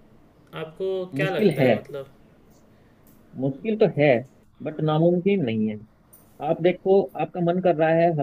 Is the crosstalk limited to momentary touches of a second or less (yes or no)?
yes